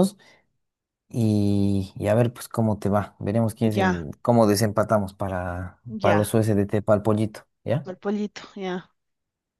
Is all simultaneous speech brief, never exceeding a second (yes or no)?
yes